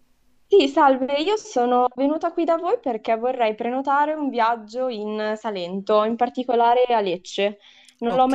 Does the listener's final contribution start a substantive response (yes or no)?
no